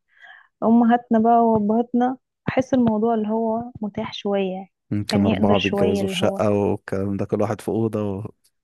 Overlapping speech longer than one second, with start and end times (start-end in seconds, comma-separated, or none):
5.1-6.4